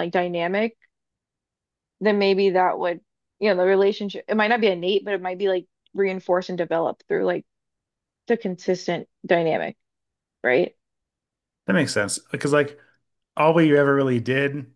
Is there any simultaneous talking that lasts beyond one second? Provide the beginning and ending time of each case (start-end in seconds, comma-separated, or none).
none